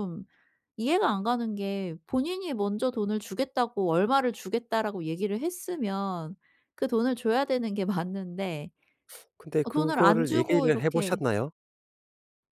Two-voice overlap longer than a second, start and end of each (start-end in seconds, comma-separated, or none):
9.6-11.2